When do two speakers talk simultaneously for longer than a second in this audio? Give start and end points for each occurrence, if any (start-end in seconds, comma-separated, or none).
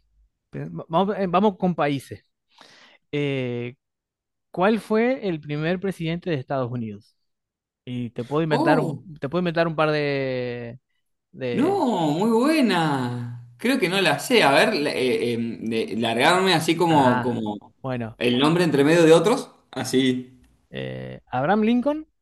none